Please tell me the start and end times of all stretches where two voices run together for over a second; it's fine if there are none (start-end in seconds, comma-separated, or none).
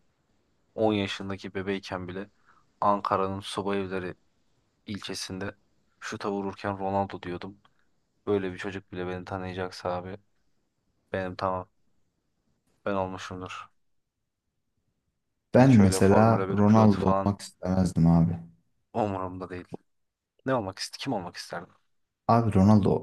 15.6-17.3